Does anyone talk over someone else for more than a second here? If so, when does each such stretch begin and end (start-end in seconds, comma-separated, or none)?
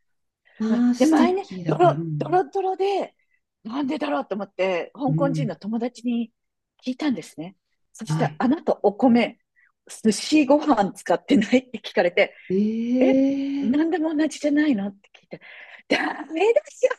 0.7-2.4